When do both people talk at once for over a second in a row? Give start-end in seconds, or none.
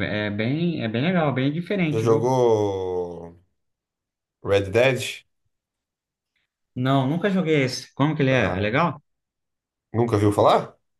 none